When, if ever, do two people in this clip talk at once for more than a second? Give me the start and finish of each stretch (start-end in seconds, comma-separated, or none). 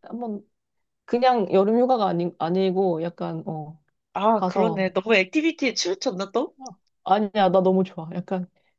none